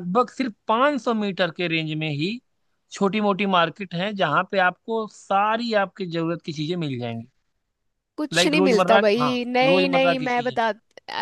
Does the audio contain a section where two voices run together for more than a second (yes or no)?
yes